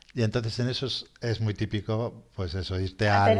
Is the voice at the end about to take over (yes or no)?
no